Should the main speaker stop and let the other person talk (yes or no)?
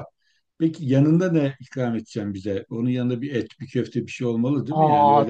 yes